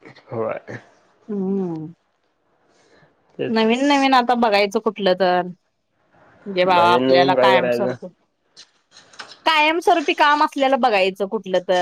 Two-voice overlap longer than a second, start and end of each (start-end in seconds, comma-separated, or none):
6.6-7.9